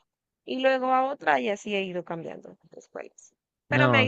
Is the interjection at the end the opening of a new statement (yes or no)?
yes